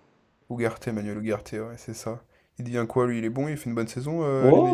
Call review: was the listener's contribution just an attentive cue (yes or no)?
no